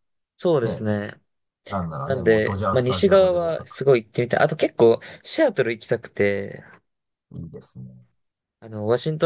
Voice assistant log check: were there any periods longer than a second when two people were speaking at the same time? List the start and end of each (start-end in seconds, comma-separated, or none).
2.0-3.7